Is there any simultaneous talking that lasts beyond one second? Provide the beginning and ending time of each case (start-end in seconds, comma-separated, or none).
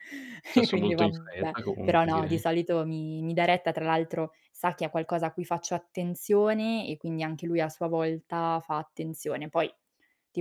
0.5-2.4